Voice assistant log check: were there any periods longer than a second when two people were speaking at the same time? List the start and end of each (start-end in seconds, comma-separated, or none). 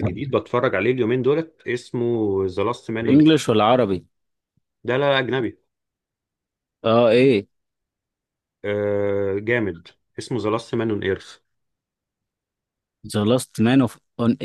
none